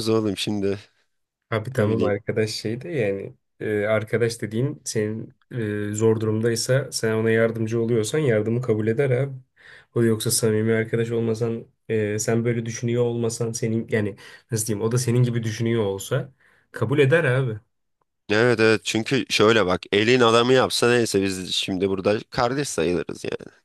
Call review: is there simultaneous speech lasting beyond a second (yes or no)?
no